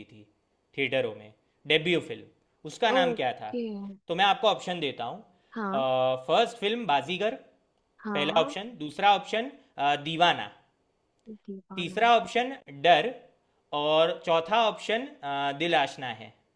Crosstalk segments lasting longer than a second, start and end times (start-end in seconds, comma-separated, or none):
none